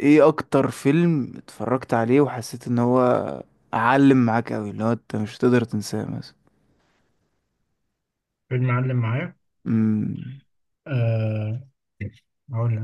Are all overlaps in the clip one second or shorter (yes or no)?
yes